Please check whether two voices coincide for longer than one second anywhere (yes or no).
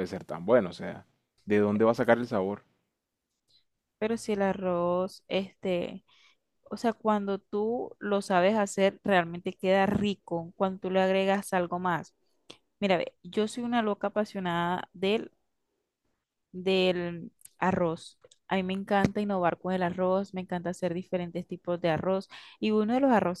no